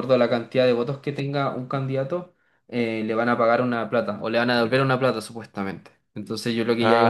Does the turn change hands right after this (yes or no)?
no